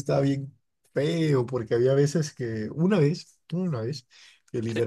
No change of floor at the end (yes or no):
yes